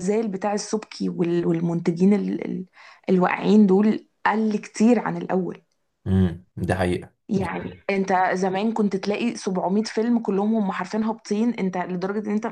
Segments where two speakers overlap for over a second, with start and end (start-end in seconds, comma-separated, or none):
none